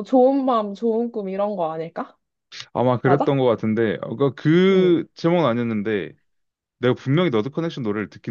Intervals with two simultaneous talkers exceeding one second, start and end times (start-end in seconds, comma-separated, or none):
none